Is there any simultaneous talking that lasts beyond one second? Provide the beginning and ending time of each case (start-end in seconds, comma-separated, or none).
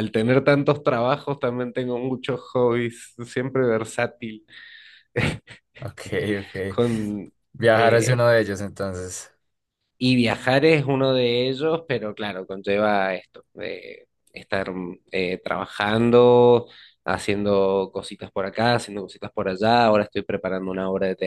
none